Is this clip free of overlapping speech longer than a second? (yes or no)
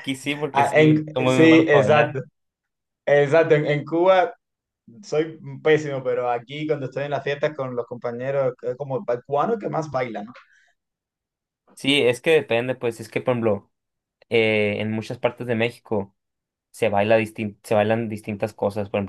no